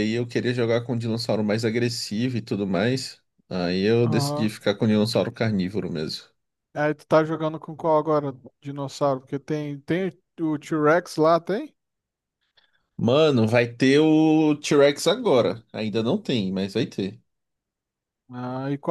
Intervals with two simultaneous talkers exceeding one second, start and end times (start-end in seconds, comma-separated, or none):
none